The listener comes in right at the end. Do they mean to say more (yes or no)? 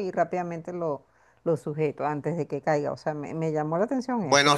yes